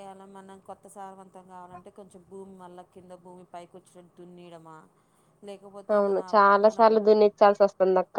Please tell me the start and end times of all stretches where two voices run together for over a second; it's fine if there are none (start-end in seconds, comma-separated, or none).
none